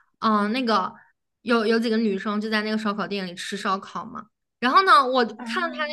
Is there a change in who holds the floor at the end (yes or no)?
no